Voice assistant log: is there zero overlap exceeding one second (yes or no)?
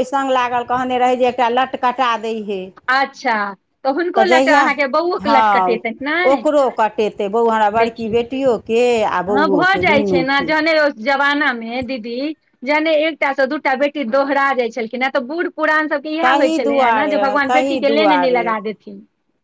no